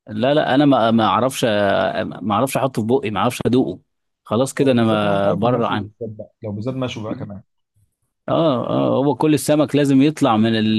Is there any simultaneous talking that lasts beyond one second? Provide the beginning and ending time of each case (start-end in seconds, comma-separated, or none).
4.6-5.9